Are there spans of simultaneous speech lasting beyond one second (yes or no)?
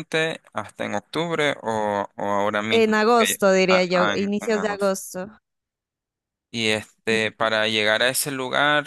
yes